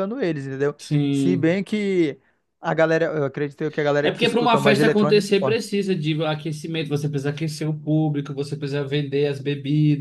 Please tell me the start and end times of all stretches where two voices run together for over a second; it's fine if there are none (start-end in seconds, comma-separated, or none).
4.0-5.6